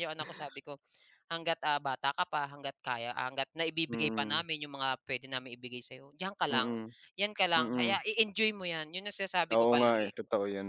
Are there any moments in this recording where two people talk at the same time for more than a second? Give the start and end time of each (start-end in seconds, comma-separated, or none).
none